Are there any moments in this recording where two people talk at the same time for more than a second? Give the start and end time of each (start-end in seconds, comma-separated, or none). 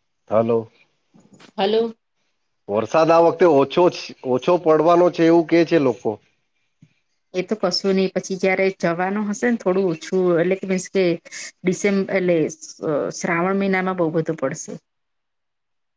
none